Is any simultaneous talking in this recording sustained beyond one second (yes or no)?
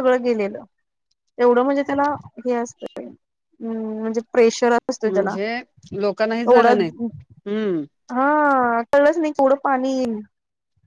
no